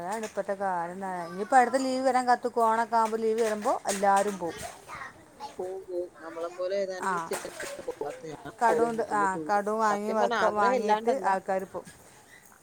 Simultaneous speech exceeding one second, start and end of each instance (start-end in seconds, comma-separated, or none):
9.0-11.3